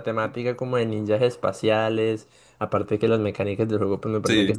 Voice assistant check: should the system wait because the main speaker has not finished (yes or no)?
no